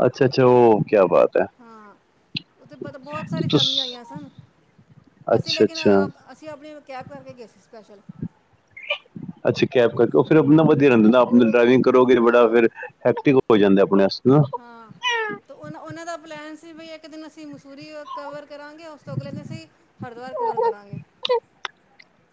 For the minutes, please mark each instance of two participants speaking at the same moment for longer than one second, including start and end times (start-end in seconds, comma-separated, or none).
none